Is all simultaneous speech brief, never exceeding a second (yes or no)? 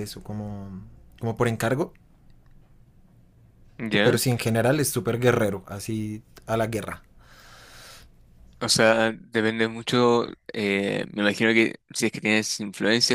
yes